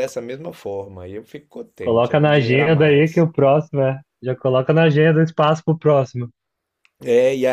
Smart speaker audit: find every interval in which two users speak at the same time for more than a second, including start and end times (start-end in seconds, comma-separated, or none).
1.8-3.2